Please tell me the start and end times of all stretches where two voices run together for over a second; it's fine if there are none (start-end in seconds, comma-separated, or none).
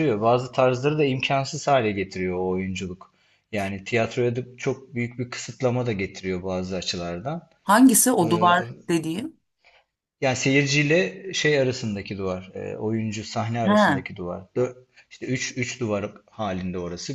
none